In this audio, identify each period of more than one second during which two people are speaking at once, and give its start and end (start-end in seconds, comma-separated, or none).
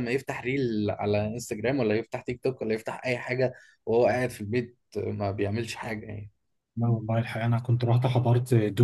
none